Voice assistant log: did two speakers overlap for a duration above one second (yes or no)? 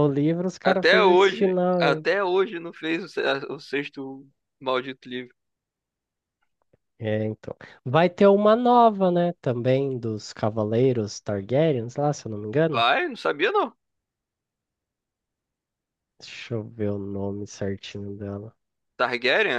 yes